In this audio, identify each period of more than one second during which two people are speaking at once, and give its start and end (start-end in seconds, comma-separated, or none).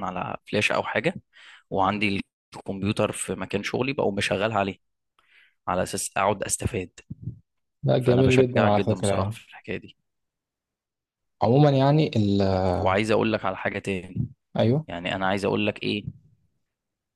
8.0-9.4